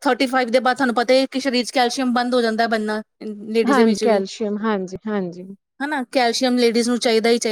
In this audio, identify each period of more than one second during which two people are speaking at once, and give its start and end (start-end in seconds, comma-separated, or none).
none